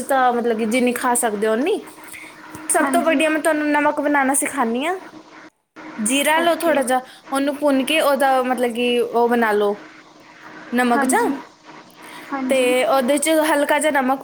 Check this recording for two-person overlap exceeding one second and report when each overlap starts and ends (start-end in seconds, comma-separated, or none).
none